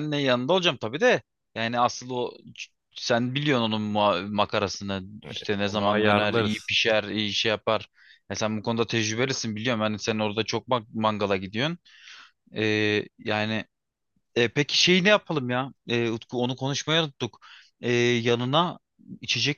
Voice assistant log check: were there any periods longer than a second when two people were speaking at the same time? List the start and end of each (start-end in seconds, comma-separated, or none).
5.2-6.7